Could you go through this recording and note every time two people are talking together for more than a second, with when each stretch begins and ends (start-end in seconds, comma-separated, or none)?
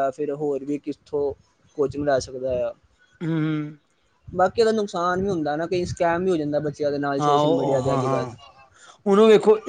none